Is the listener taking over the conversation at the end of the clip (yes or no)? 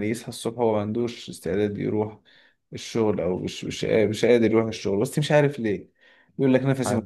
no